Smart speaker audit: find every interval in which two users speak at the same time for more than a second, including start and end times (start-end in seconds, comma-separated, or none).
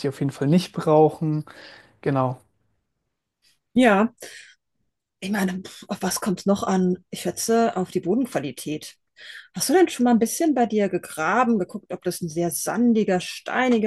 none